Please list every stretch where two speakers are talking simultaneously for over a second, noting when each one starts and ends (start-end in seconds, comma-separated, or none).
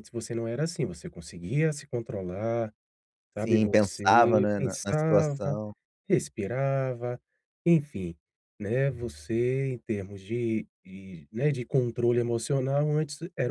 3.4-5.6